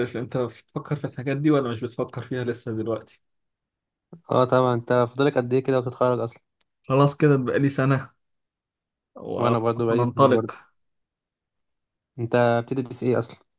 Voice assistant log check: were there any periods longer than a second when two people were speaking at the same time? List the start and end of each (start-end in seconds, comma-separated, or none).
9.4-10.6